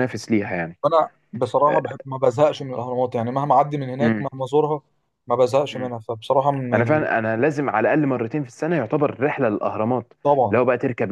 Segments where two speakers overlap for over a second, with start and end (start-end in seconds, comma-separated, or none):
none